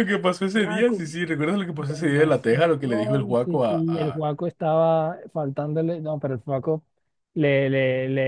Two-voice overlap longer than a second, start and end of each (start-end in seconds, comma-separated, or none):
1.8-4.2